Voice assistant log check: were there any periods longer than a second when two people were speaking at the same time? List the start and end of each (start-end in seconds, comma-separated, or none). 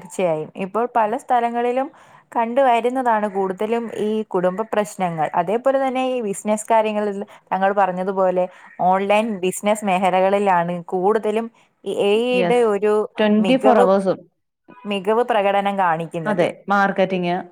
none